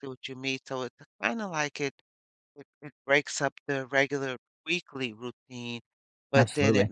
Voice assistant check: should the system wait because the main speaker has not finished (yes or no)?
yes